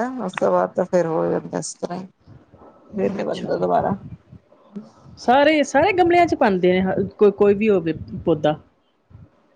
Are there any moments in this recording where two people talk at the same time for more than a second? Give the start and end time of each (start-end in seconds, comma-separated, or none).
none